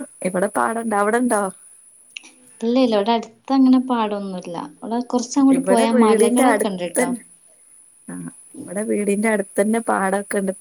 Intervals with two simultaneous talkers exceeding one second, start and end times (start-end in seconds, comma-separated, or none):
5.6-7.1